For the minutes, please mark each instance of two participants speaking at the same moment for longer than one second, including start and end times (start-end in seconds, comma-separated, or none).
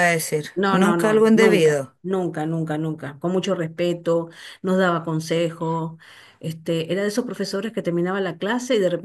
0.5-1.9